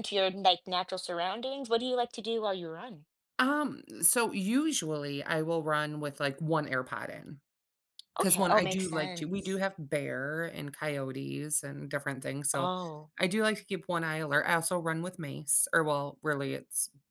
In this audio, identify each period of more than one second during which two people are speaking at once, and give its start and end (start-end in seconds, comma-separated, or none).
8.2-9.6